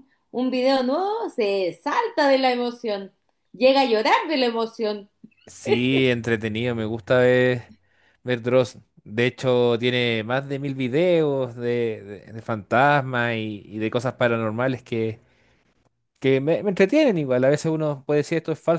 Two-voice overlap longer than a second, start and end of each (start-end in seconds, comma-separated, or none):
none